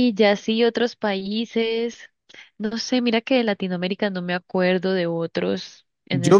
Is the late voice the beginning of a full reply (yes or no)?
yes